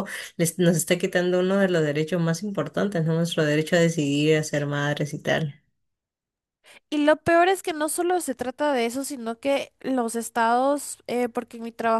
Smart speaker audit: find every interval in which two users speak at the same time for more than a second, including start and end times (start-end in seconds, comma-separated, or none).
none